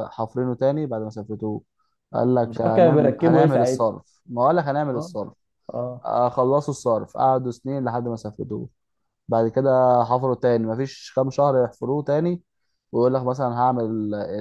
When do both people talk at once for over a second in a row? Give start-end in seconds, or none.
2.4-3.9